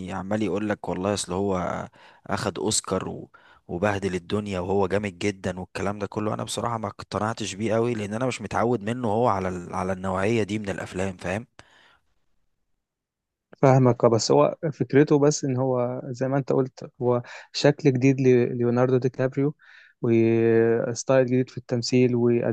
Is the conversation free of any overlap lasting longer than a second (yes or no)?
yes